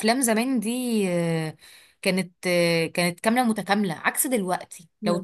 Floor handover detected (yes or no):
no